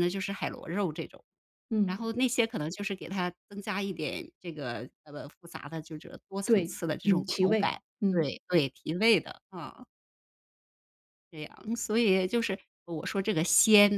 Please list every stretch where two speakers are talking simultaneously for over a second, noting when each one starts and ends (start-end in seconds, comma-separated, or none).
6.4-8.3